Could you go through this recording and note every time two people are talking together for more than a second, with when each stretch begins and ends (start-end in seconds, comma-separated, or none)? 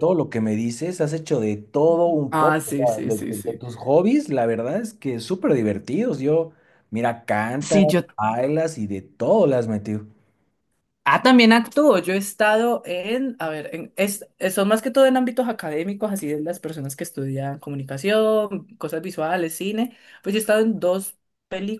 2.3-3.6